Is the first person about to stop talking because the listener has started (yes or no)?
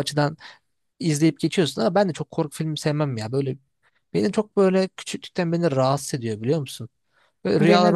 no